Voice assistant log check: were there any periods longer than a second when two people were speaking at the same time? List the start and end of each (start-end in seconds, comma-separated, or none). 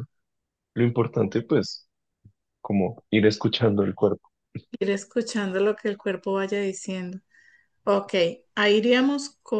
none